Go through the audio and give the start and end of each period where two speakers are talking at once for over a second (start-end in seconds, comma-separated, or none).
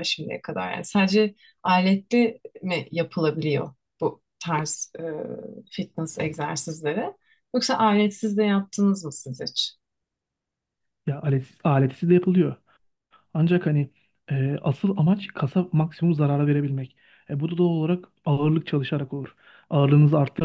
none